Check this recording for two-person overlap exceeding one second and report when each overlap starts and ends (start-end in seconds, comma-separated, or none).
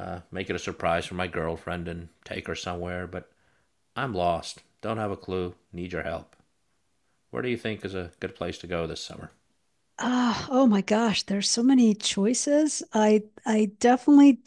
none